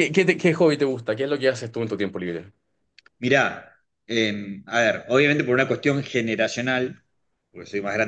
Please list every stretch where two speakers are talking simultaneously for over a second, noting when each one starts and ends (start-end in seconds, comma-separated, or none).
none